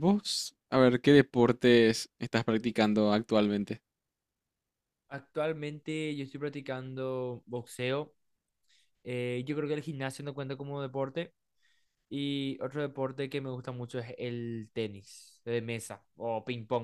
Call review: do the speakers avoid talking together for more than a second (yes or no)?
yes